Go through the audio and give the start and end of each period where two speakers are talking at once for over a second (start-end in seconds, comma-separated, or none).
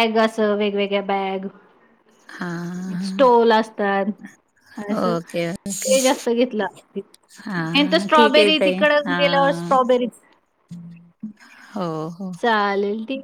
7.8-9.7